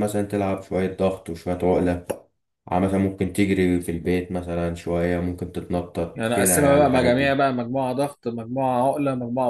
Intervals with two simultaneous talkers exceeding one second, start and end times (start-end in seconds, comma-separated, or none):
6.1-7.4